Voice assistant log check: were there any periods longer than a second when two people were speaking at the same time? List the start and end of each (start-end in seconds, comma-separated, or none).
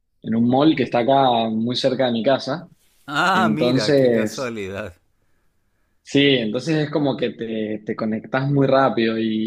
3.3-4.5